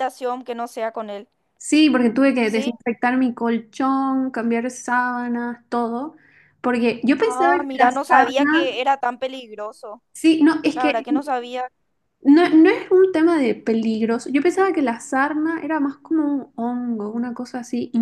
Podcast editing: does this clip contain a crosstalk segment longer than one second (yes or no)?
yes